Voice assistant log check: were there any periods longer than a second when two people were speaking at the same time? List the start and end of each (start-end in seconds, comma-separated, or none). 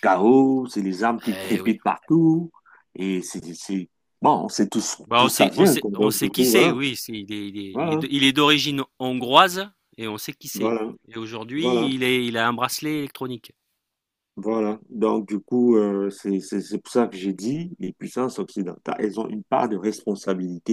5.1-6.7